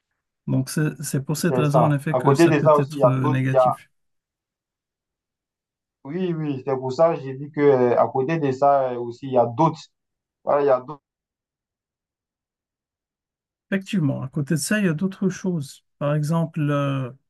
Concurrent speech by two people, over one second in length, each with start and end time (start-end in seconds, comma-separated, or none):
1.4-3.8